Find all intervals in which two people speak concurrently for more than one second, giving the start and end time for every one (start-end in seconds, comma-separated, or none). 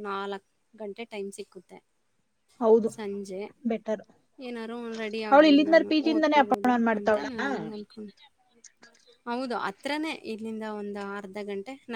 5.3-7.3